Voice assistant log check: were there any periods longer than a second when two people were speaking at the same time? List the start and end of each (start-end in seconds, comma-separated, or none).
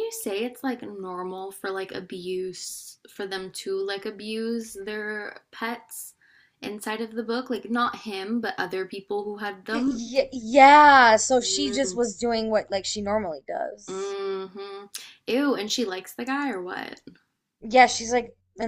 none